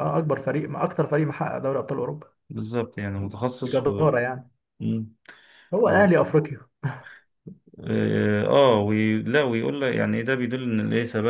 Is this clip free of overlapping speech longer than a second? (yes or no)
yes